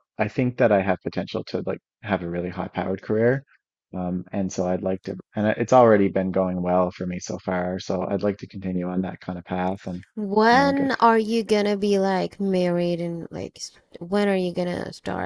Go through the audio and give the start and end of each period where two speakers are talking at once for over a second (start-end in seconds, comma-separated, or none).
none